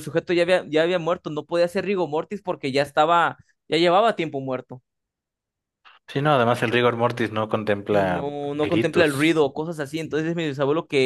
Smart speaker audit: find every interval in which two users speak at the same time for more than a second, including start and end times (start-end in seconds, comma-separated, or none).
7.9-9.4